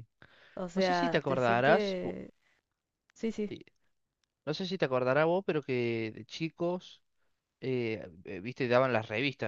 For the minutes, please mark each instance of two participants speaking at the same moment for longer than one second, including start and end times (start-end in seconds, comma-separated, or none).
0.7-2.1